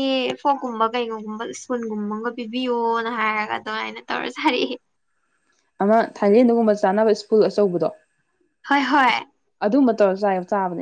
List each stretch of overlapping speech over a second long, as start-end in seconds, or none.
none